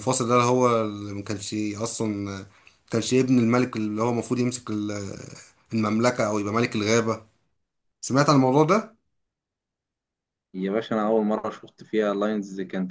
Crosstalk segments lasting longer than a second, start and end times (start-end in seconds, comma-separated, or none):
none